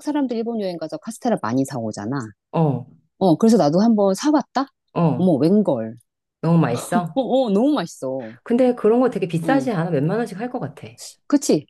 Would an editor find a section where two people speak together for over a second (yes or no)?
no